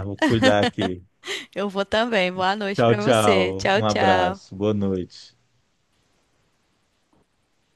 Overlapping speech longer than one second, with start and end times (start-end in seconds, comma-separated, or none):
2.7-4.6